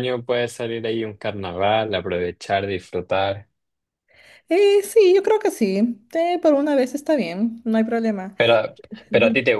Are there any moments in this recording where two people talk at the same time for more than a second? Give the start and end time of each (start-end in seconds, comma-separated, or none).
none